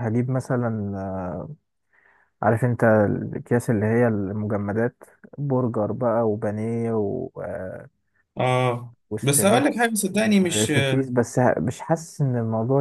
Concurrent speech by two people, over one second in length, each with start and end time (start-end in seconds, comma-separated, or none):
9.1-11.1